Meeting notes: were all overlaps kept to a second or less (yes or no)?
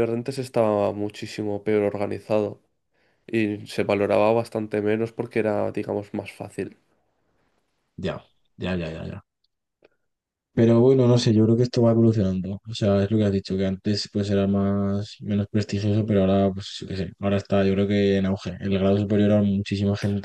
yes